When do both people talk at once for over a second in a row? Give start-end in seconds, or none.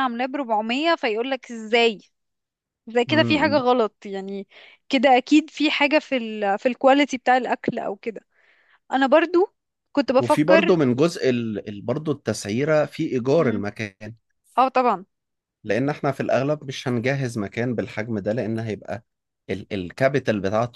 none